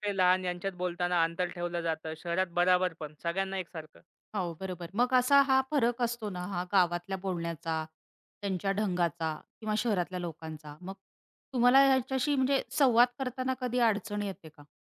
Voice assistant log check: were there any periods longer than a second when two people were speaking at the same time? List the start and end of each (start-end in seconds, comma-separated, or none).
none